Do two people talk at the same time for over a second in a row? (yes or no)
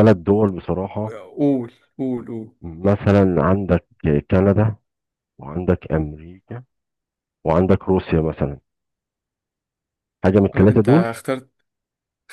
no